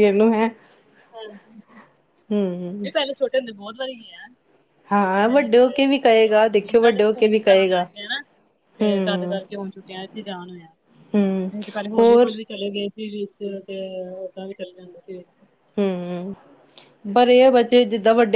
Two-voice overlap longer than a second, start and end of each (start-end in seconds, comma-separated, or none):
5.1-7.8